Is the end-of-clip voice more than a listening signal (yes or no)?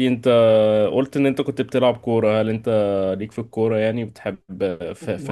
yes